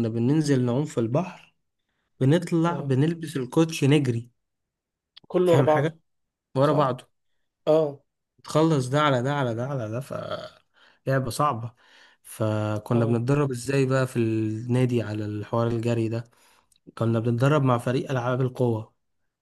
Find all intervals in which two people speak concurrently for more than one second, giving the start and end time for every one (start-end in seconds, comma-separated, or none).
none